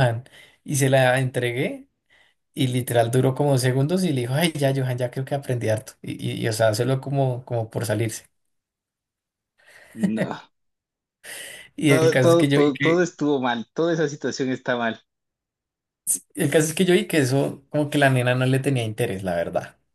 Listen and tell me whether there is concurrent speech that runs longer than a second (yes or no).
yes